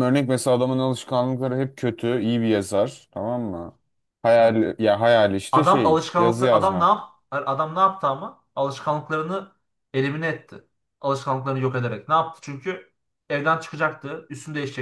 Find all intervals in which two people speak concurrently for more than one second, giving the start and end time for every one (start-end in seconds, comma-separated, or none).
5.5-7.0